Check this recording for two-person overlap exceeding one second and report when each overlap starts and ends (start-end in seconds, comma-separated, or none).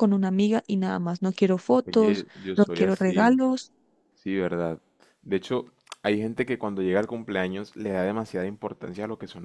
1.9-3.4